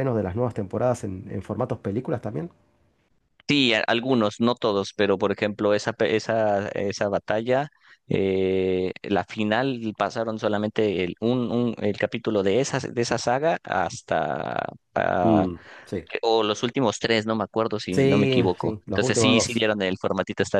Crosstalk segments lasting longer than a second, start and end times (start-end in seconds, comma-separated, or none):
17.9-19.7